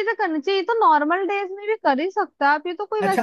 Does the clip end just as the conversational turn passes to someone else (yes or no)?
yes